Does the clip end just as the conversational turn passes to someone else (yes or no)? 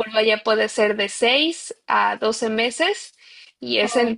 no